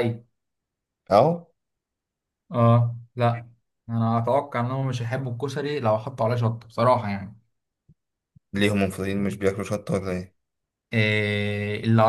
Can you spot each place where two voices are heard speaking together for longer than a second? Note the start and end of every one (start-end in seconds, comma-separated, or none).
none